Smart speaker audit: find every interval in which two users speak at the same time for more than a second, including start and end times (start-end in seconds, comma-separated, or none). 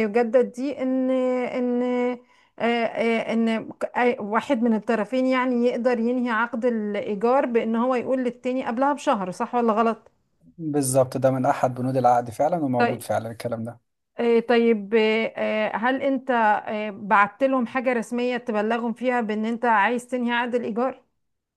none